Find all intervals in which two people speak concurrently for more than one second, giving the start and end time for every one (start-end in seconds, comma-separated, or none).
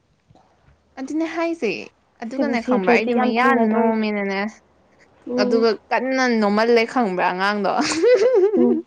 2.3-3.9